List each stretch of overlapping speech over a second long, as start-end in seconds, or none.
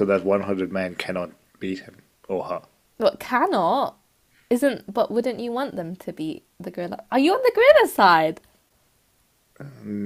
none